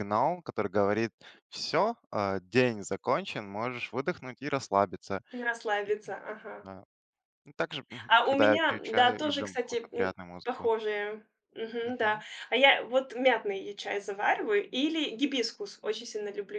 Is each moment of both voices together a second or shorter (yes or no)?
no